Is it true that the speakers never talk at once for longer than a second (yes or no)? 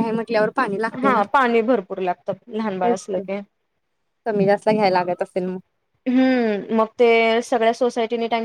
yes